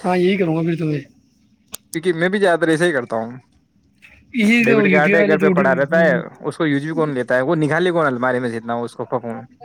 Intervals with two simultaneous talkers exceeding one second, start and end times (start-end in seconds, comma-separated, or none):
4.7-6.1